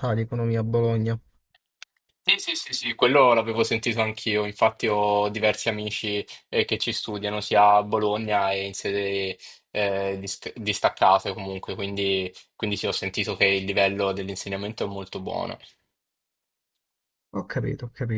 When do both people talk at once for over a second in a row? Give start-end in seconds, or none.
none